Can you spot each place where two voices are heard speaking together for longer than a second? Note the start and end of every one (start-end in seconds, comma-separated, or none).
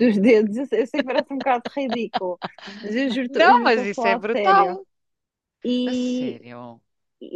3.3-4.8